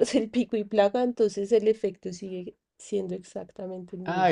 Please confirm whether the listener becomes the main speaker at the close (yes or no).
yes